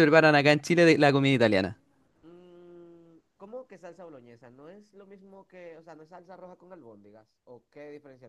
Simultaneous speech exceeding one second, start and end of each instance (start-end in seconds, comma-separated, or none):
none